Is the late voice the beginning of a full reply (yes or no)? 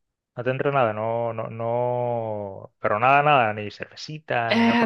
yes